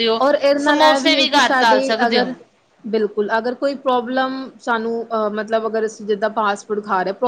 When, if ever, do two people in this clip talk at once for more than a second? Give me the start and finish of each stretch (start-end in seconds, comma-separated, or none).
0.7-2.3